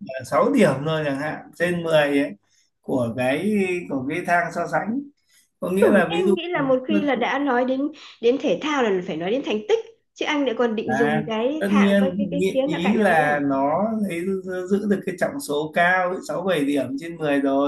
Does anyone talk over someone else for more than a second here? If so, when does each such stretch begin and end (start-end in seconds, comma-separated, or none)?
10.8-13.2